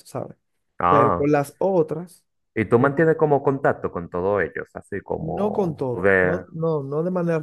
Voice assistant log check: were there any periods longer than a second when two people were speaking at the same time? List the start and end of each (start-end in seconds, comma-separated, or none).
5.2-6.4